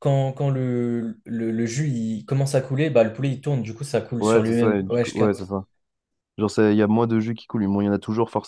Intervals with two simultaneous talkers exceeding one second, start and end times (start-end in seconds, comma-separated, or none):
4.2-5.5